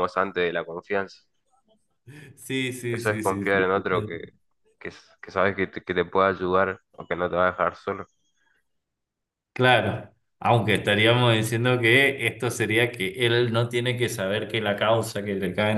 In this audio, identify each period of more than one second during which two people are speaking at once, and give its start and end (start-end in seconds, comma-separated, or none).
2.8-4.2